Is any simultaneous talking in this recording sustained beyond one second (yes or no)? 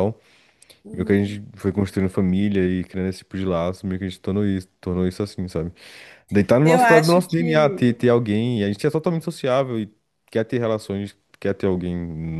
yes